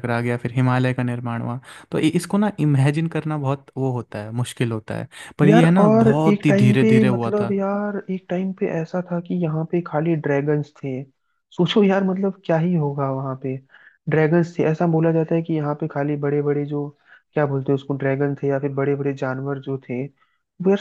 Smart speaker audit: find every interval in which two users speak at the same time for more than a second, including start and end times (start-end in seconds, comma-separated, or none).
5.4-7.5